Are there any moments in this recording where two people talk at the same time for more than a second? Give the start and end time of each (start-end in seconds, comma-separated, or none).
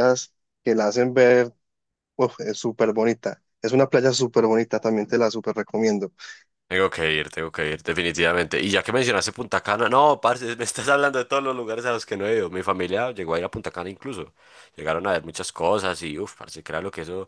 none